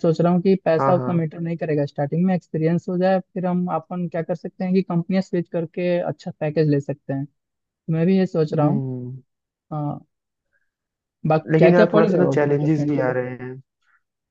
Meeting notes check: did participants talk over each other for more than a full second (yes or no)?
yes